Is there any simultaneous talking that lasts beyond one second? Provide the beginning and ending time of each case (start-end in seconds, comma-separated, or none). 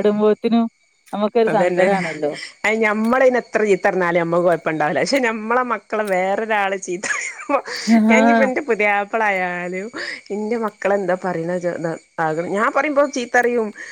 none